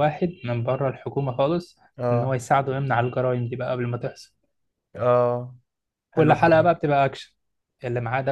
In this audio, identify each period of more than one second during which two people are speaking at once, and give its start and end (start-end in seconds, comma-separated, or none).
none